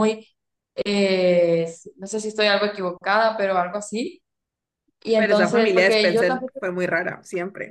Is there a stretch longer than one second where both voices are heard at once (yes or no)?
yes